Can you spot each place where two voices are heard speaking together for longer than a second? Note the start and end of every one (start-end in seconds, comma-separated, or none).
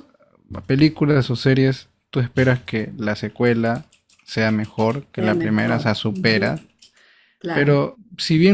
5.2-6.6